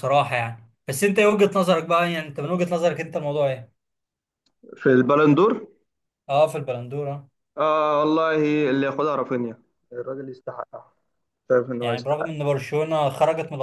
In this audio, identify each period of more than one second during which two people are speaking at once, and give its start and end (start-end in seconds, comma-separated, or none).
none